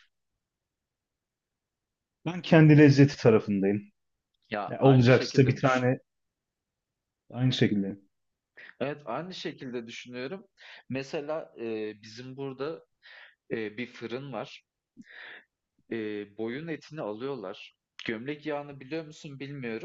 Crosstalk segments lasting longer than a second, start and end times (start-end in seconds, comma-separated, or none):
4.7-5.9